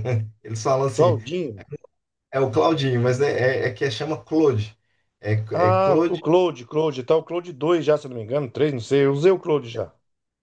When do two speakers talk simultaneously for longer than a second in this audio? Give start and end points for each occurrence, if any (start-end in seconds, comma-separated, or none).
none